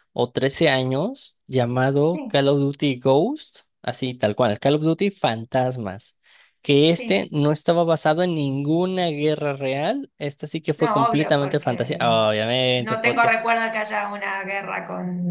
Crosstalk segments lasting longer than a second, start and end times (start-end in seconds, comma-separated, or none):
10.8-12.0